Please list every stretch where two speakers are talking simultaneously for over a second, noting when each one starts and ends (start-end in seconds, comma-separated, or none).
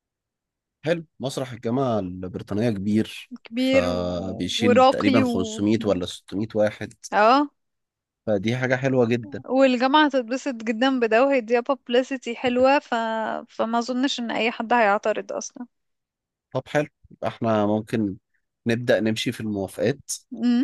3.4-5.6